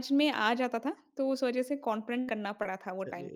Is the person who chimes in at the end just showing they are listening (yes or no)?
no